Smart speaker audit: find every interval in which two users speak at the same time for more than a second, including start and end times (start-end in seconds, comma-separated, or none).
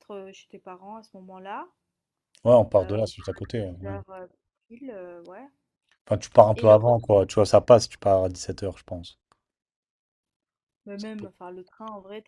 2.8-4.0